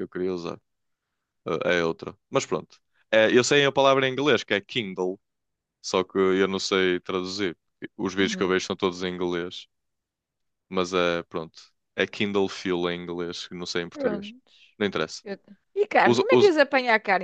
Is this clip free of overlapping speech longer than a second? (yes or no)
yes